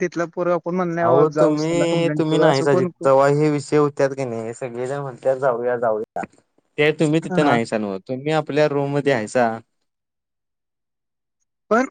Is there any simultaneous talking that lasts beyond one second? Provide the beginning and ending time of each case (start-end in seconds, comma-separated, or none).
1.1-2.9